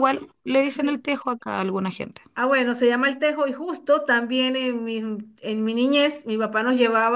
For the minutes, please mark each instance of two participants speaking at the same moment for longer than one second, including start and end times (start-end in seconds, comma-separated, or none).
none